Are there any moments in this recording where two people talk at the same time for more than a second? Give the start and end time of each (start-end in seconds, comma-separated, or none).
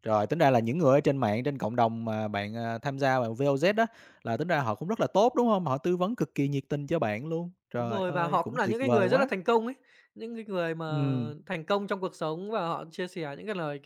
7.8-9.3